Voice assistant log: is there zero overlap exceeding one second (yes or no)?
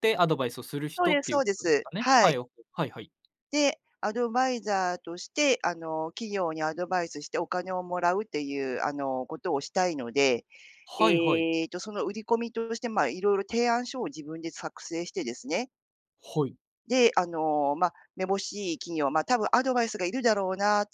no